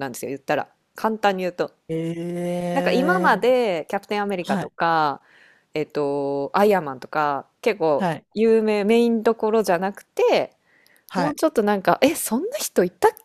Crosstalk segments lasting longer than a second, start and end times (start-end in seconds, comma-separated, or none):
none